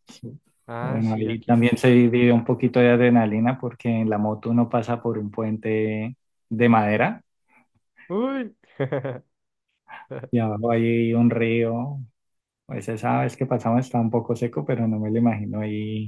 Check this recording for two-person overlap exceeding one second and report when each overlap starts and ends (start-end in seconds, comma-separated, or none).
0.8-2.2